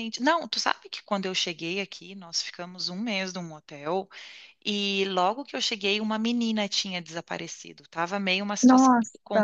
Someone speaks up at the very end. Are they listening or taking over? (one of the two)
listening